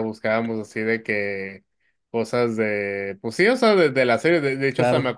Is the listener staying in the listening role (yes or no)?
yes